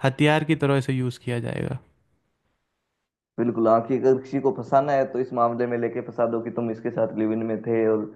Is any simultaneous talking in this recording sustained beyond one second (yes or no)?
no